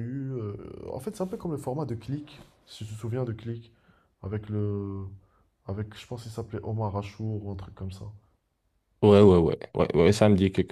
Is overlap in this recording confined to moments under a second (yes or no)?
yes